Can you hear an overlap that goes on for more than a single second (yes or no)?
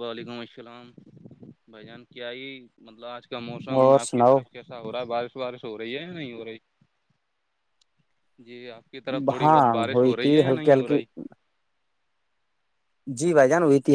yes